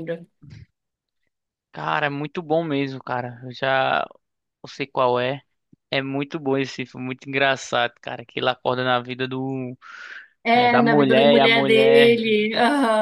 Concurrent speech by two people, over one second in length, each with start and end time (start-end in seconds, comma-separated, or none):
10.5-12.2